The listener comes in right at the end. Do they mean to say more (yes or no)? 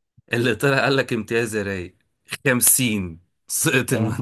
yes